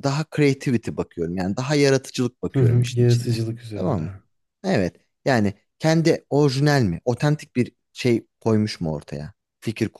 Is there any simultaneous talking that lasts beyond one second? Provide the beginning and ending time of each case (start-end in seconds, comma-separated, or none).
2.5-4.0